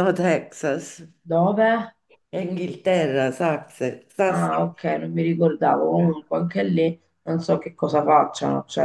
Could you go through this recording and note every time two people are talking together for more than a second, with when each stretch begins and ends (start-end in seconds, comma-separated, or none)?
none